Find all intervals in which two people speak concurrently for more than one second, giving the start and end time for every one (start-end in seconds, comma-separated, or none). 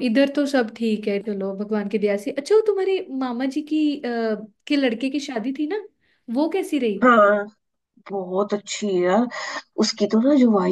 none